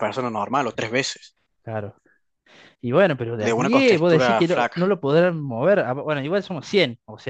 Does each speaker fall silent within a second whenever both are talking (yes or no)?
no